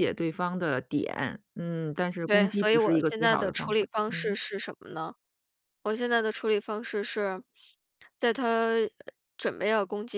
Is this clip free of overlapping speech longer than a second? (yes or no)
no